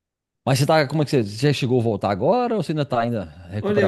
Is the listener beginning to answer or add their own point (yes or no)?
yes